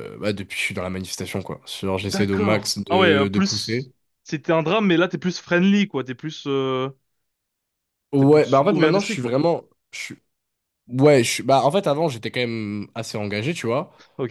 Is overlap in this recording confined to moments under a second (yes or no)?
no